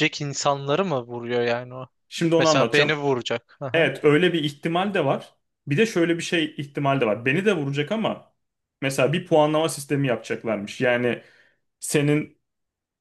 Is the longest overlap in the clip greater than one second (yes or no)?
no